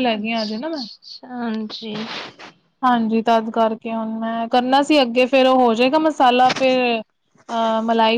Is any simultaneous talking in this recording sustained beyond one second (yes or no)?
no